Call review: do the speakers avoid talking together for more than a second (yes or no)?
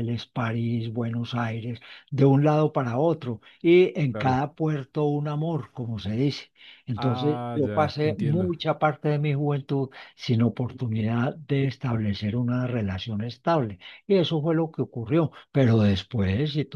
no